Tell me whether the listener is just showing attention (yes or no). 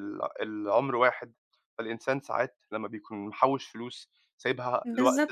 no